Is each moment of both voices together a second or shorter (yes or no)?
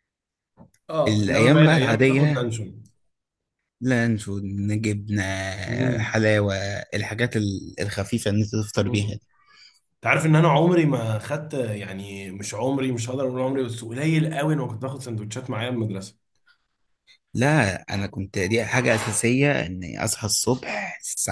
no